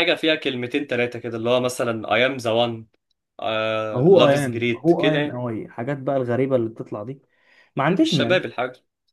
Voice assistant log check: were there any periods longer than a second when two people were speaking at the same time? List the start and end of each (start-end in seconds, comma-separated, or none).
3.9-5.4